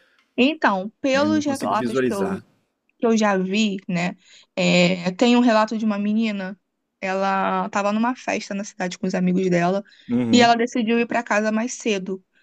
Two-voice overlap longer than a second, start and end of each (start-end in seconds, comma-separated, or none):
1.1-2.4